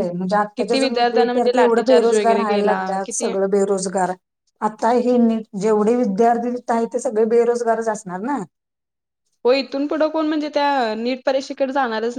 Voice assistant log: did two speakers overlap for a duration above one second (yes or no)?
yes